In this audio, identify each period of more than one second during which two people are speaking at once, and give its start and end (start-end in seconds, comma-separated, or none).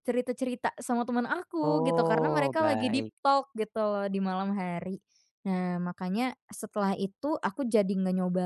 1.6-3.1